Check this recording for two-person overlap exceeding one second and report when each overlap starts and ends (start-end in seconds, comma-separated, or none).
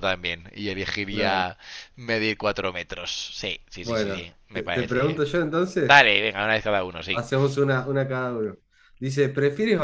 3.8-5.2